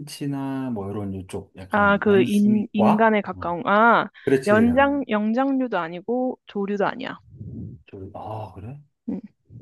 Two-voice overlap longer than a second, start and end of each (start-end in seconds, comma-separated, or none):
1.7-3.6